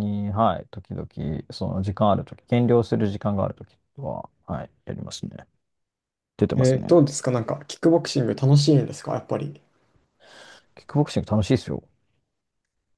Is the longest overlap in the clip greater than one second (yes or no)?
no